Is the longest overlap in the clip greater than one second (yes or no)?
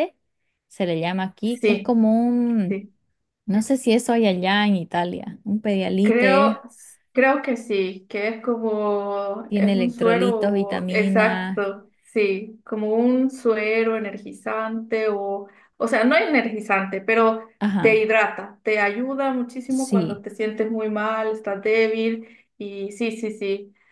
yes